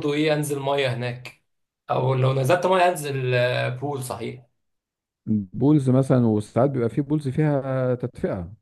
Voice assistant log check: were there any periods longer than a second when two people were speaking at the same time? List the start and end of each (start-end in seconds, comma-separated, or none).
none